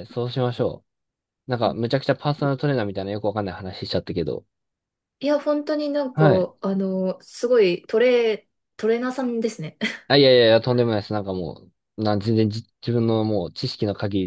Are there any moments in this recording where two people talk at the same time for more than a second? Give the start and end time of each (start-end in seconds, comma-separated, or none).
none